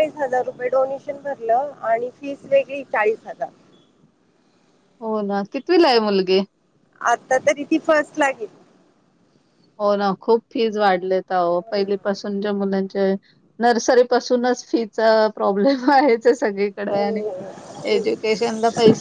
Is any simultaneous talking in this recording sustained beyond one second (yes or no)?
no